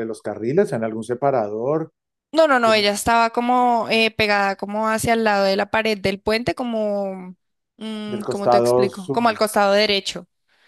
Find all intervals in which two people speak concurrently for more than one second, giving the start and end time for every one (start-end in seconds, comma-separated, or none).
8.1-9.4